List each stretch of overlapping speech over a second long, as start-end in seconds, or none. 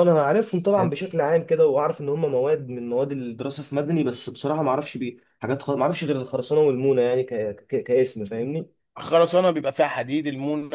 none